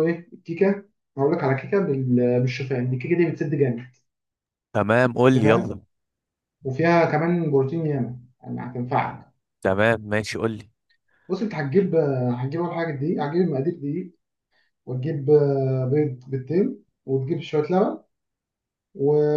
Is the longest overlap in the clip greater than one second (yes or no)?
no